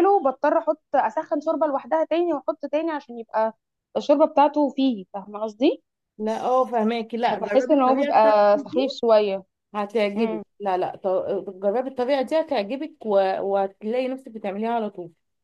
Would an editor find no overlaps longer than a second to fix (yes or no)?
no